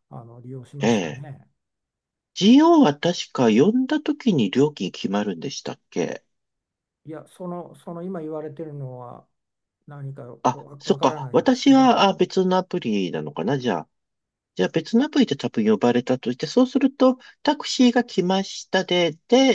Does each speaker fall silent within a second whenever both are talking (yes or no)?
no